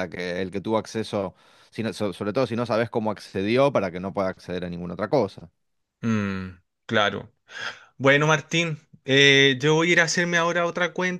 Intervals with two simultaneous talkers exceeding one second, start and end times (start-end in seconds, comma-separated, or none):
none